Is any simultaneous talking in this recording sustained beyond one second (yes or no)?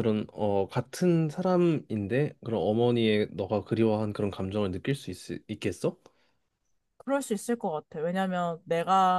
no